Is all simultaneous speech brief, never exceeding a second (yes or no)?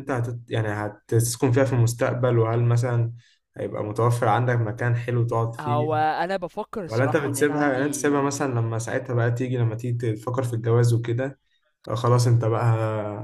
no